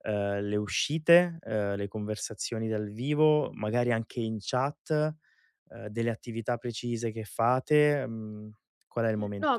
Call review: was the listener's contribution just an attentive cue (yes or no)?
no